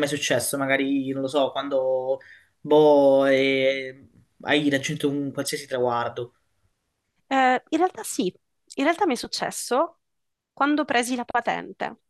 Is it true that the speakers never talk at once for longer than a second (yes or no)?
yes